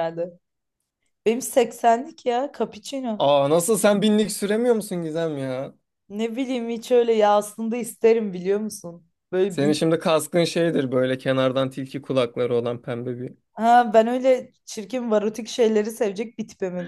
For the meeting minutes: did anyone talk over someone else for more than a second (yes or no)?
no